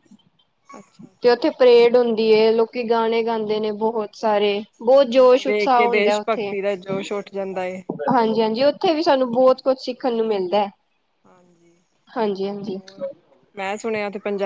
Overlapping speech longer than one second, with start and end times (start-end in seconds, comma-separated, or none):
5.1-6.5